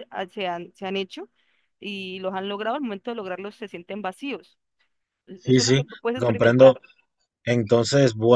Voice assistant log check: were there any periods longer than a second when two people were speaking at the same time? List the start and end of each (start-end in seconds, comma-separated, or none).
5.4-6.8